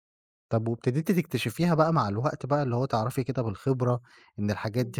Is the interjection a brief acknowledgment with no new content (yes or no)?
yes